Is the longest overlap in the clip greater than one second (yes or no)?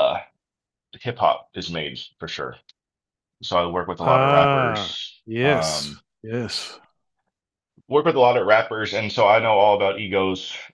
yes